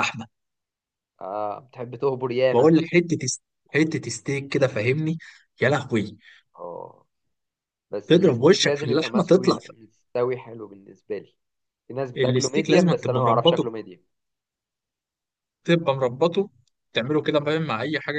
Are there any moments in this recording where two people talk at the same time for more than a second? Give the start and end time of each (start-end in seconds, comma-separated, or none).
8.1-9.7, 12.2-13.7